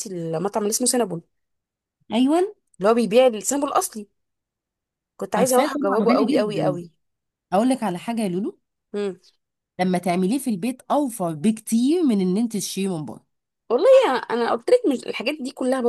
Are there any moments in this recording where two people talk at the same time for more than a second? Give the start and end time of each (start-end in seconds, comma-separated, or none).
5.3-6.8